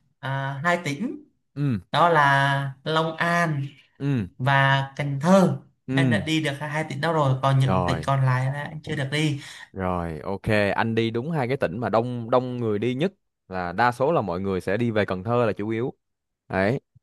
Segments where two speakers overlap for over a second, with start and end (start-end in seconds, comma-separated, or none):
none